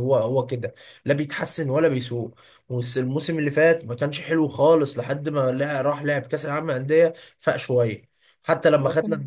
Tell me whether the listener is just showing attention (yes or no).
yes